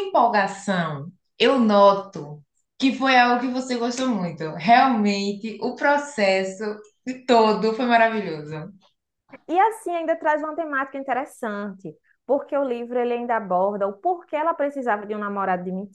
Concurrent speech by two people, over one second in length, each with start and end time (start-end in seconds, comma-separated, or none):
none